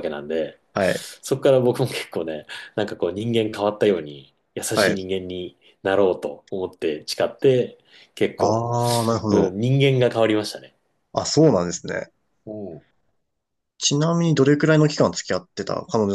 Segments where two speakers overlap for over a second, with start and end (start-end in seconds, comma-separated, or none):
none